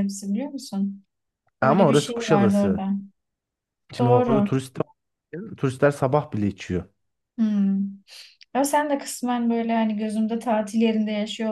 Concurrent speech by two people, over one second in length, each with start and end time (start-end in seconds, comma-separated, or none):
1.6-2.9